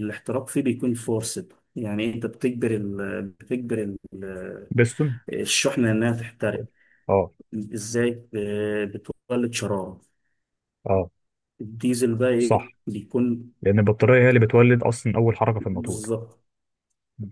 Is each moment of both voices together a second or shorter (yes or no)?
yes